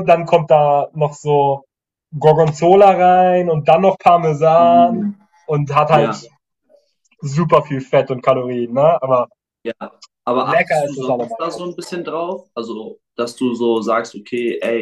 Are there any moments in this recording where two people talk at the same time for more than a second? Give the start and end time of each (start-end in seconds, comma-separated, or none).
10.4-11.8